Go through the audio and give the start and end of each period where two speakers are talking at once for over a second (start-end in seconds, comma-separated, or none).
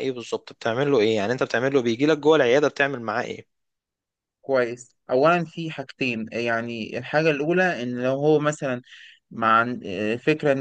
none